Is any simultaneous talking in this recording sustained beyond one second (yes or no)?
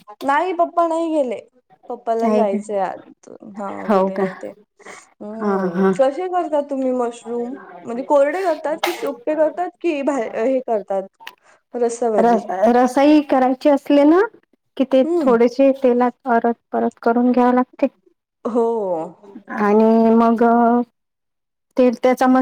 no